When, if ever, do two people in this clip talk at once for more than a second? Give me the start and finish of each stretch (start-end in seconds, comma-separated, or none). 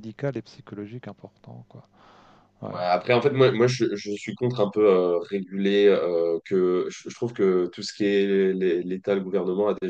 none